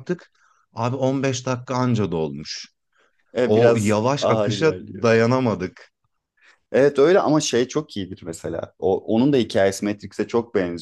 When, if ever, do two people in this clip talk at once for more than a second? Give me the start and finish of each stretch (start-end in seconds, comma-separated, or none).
3.4-5.1